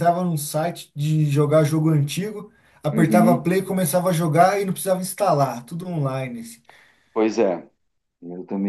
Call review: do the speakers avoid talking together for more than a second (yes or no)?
yes